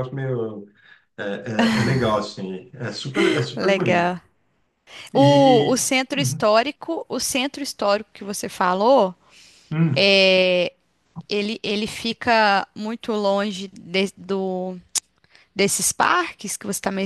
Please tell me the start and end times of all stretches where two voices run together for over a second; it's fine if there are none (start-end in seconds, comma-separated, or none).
5.1-6.5